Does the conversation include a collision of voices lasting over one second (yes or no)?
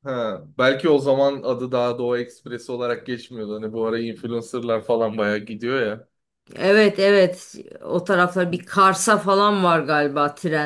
no